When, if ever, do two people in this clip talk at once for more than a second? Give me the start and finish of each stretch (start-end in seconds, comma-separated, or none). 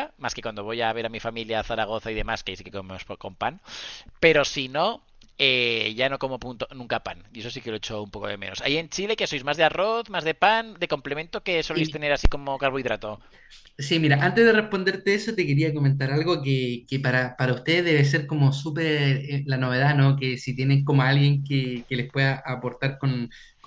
none